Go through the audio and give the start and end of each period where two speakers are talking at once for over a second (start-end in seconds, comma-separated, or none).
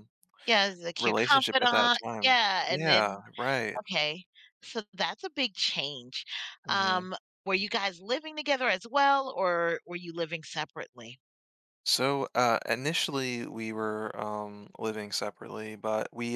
1.0-3.2